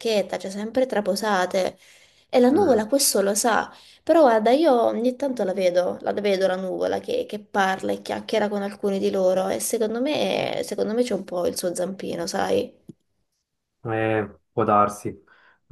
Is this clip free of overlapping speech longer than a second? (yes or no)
yes